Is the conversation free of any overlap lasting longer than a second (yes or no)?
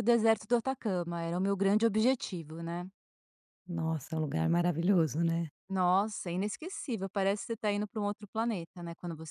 yes